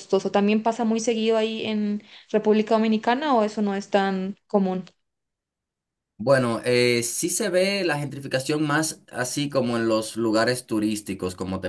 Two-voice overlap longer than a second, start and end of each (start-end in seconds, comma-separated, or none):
none